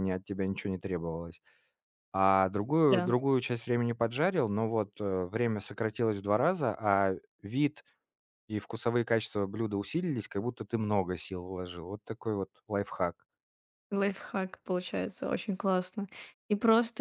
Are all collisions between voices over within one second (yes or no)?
yes